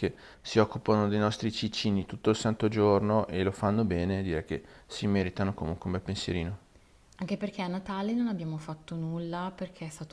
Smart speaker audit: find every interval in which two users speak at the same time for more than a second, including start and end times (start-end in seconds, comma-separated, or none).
none